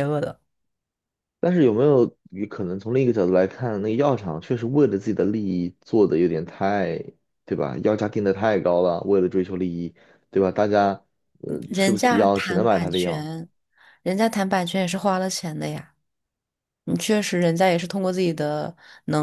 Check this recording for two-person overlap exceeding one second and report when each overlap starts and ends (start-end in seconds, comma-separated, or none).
11.7-13.3